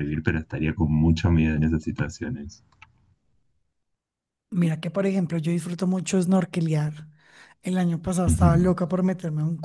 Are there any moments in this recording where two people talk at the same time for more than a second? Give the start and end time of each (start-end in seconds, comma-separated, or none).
none